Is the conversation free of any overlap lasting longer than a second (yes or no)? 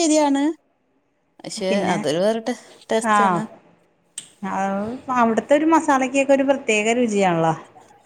yes